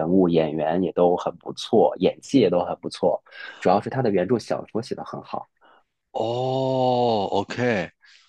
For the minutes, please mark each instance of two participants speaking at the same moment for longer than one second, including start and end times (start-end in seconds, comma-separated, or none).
none